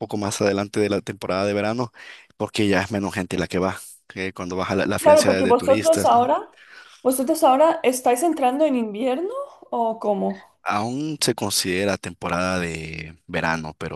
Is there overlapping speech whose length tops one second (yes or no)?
yes